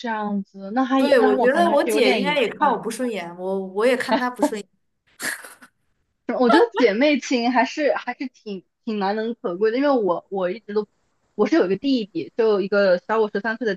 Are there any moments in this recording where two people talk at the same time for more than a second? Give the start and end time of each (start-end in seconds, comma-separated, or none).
1.0-2.8